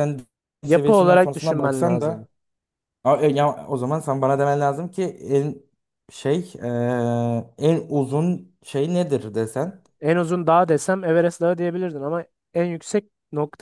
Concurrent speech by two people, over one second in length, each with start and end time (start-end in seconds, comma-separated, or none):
0.6-2.3